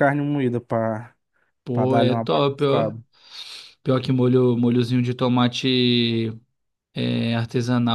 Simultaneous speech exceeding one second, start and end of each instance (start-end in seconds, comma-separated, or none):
1.7-2.9